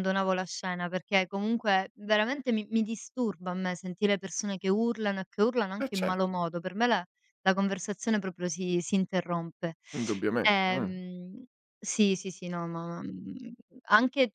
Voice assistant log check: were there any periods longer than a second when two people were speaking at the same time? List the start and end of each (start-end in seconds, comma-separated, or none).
none